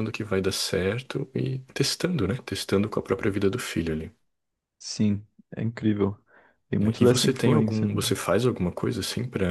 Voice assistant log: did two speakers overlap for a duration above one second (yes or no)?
yes